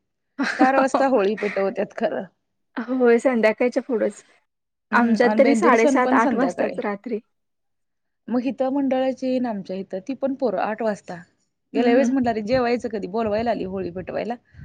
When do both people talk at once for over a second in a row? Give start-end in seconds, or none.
5.0-6.7